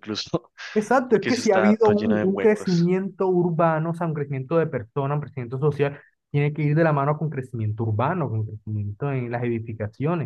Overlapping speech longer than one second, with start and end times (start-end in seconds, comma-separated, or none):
1.1-2.9